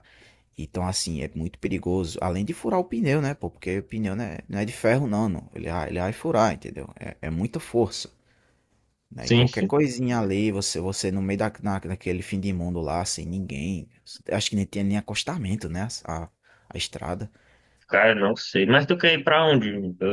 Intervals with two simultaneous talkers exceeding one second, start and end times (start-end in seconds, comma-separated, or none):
none